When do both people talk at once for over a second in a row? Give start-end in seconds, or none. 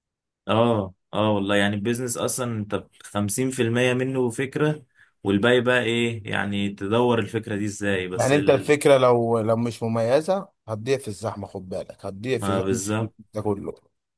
none